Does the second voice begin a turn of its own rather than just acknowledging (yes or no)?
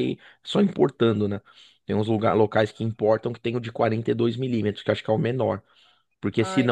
no